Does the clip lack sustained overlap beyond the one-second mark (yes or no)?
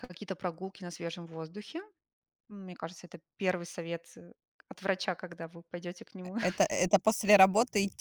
yes